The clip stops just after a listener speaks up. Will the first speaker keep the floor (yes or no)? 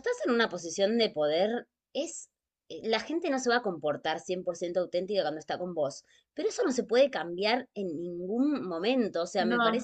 yes